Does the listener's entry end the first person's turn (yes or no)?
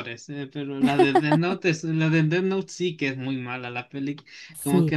no